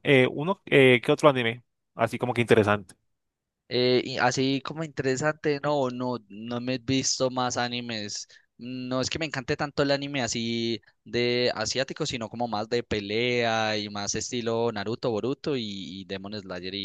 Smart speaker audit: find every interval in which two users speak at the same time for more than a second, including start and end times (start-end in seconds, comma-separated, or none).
none